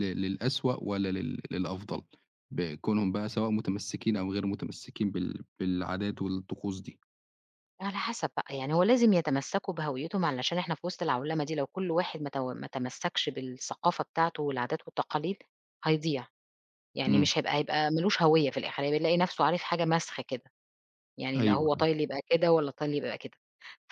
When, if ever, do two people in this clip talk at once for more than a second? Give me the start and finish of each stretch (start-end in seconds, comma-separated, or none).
none